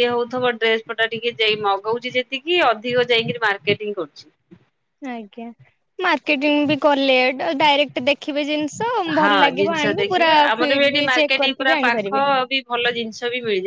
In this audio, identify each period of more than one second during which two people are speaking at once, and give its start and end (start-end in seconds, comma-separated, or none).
9.2-12.2